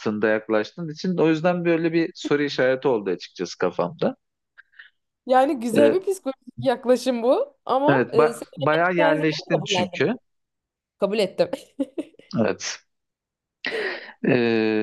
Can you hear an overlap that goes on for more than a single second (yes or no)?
yes